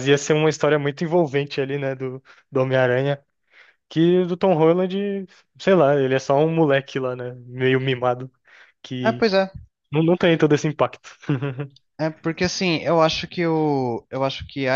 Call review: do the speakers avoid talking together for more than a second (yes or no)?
yes